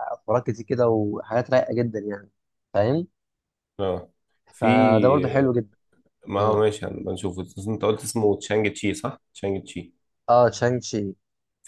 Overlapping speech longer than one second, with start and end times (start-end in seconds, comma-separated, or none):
none